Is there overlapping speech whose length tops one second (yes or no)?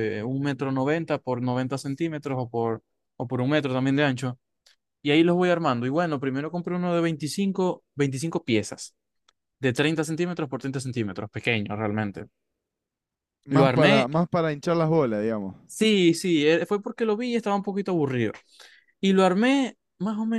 no